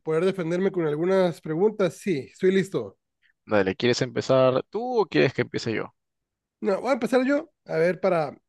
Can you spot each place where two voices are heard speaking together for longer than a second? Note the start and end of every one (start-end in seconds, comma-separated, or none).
none